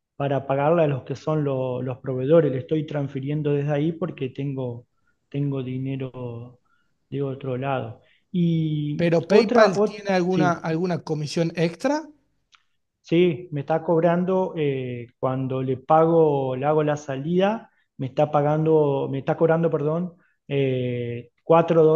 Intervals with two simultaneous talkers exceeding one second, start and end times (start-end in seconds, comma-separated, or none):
8.9-10.7